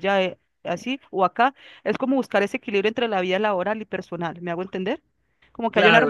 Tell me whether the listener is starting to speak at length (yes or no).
yes